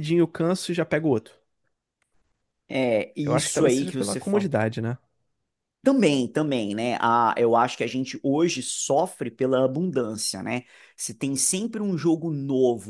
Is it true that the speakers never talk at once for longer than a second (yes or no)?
no